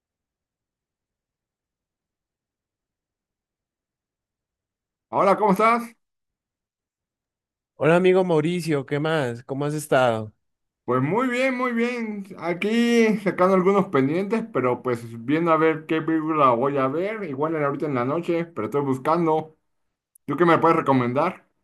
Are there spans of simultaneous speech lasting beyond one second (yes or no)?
no